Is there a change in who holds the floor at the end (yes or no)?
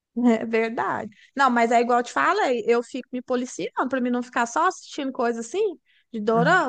no